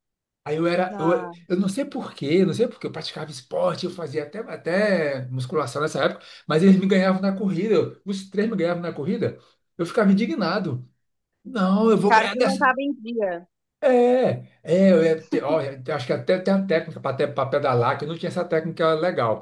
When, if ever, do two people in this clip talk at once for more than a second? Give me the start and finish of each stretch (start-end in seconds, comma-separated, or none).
none